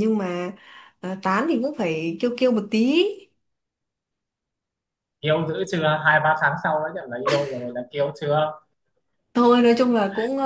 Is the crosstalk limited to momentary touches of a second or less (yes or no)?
yes